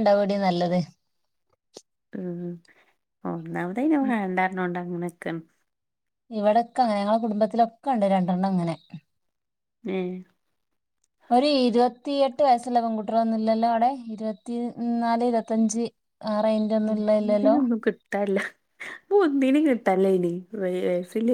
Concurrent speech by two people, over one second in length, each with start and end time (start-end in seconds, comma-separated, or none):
none